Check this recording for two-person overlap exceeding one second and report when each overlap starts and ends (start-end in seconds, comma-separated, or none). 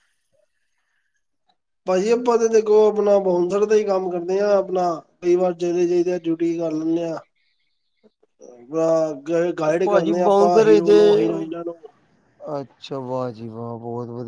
9.7-11.0